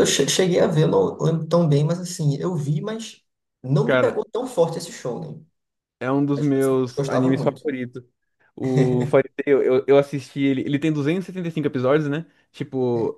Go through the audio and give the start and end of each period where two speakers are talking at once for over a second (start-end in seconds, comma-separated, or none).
6.3-7.6